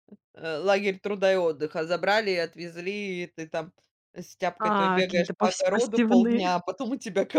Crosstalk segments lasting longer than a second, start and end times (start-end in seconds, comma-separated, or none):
4.6-6.4